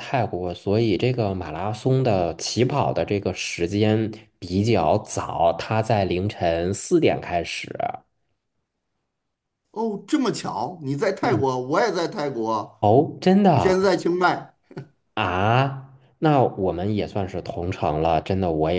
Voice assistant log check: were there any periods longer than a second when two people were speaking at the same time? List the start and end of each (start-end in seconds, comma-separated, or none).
none